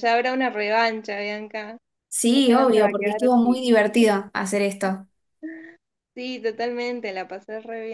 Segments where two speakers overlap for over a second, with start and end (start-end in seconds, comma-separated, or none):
2.3-3.6